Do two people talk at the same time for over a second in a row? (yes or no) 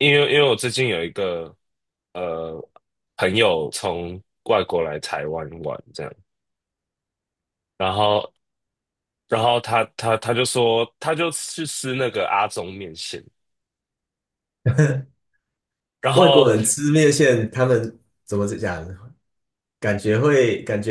no